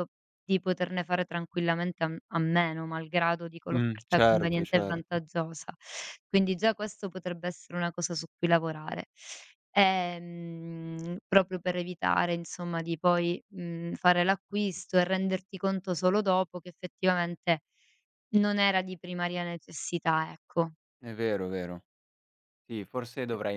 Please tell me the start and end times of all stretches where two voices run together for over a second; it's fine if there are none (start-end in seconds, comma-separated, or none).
3.7-5.2